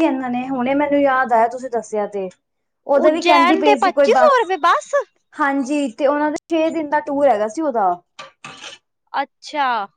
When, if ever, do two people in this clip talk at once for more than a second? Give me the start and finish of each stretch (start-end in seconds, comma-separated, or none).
3.0-4.5